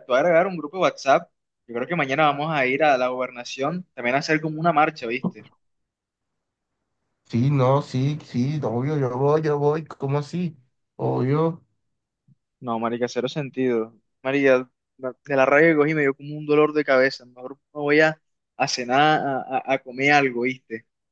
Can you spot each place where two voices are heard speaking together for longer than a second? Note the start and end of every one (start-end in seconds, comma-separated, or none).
none